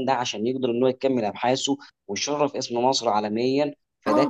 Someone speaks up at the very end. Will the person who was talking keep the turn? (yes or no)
no